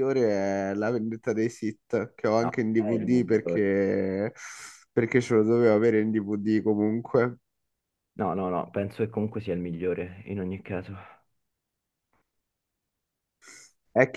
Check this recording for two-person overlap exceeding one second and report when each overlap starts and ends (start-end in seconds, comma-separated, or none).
2.4-3.7